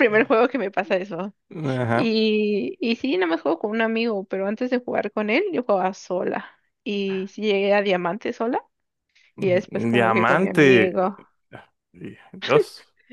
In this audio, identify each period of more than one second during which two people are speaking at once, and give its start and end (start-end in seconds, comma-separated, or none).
9.4-10.9